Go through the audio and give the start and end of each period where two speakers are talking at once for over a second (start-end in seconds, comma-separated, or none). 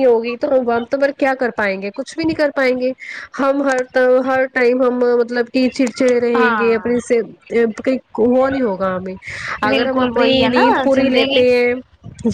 9.7-11.4